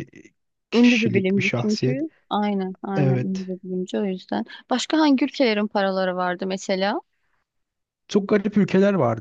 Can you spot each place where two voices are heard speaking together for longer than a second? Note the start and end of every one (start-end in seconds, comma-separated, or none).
0.7-2.0